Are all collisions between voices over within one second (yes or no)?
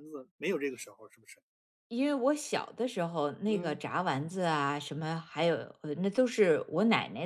yes